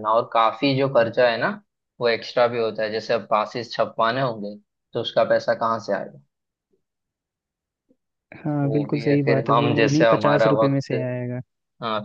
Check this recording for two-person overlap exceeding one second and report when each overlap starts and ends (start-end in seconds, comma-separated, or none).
8.6-10.9